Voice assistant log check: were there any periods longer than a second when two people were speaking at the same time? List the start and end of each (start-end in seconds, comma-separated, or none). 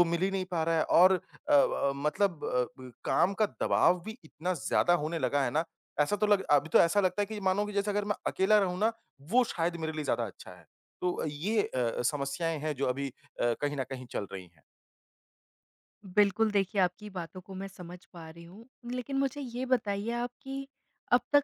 none